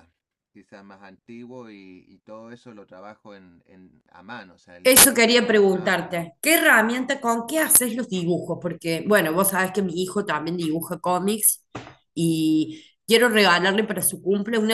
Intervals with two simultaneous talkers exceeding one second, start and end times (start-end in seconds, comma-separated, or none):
4.8-6.3